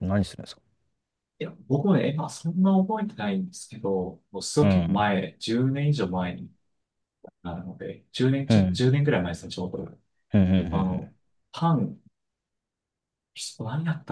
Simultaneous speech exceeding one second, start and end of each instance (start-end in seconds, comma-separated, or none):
none